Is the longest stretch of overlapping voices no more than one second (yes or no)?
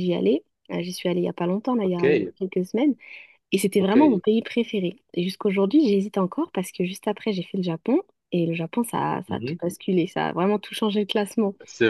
yes